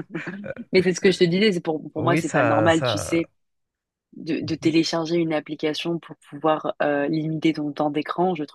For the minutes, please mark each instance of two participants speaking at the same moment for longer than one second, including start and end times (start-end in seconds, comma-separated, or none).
2.0-3.2